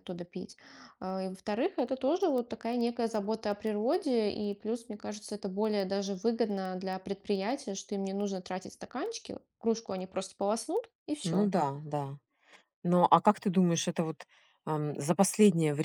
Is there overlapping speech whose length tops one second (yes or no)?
no